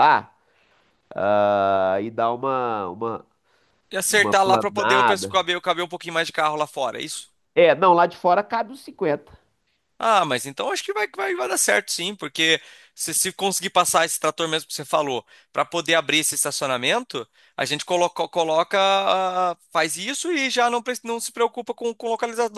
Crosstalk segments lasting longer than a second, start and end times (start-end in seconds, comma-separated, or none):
4.1-5.3